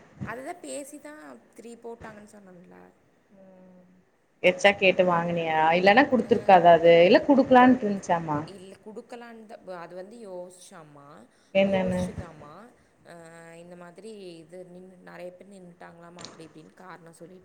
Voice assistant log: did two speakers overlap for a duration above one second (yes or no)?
no